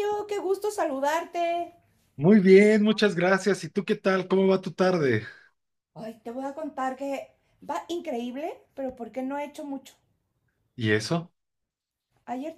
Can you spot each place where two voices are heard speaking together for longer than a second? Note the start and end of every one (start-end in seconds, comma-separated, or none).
none